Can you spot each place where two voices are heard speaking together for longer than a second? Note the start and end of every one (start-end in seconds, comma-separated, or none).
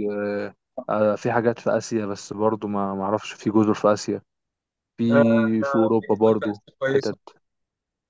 5.6-7.2